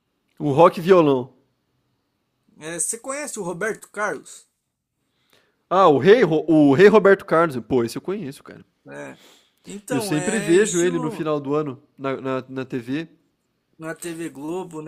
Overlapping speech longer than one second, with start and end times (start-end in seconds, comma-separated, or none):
9.9-11.3